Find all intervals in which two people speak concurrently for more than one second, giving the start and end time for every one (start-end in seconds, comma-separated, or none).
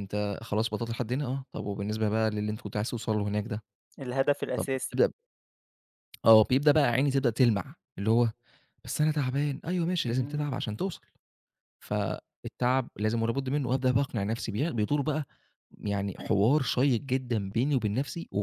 none